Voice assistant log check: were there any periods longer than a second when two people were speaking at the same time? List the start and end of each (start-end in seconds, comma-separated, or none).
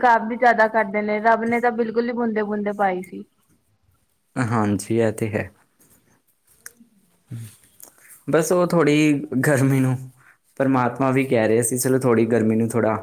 none